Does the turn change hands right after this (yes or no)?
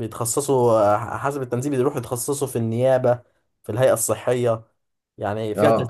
yes